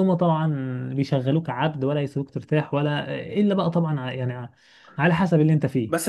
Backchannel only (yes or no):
no